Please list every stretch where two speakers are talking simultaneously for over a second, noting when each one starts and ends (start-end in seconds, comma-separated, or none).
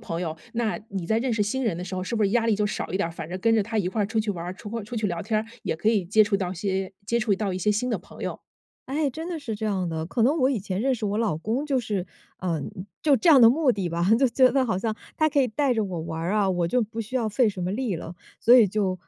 none